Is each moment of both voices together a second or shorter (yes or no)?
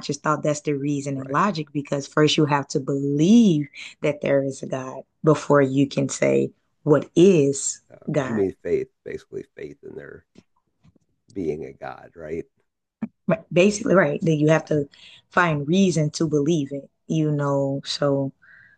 yes